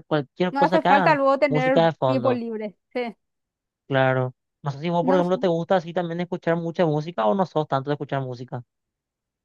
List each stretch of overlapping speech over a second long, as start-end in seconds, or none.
0.5-2.4